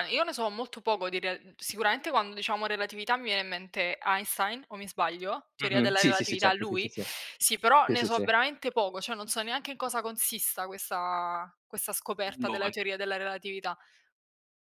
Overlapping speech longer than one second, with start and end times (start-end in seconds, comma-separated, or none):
5.6-6.9